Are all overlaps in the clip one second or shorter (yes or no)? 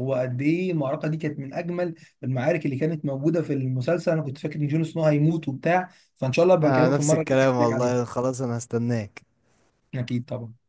no